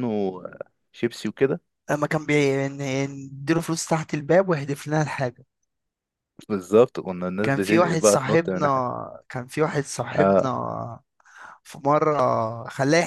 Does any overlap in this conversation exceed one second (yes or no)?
yes